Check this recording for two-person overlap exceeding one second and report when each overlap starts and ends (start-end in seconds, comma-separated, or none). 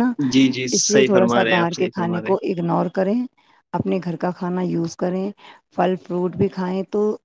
0.8-2.4